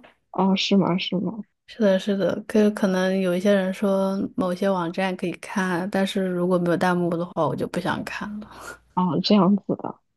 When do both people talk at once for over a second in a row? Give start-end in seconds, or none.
none